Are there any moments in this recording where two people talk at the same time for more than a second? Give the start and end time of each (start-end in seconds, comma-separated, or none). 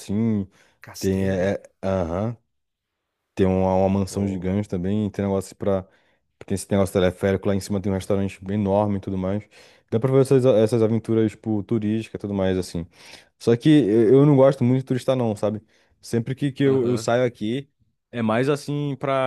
none